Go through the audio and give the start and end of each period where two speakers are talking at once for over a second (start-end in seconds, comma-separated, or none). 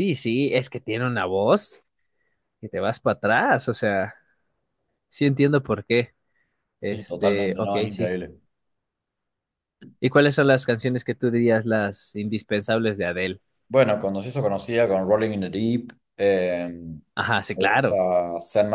6.9-8.2